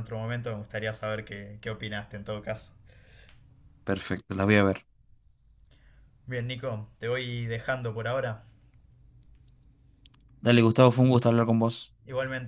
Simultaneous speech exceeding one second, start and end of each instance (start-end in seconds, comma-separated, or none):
none